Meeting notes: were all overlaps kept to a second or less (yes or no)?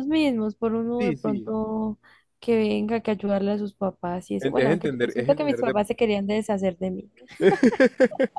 no